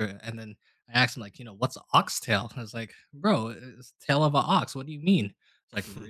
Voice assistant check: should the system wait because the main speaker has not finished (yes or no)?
yes